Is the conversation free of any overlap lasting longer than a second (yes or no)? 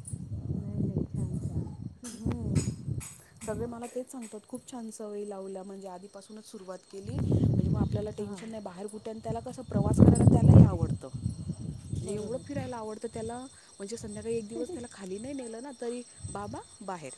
yes